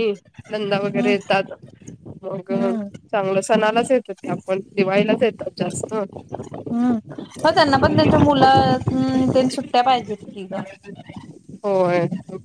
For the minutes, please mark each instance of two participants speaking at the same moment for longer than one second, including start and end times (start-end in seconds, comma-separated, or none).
none